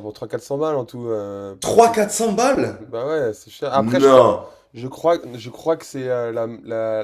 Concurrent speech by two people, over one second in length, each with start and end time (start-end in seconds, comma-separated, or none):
none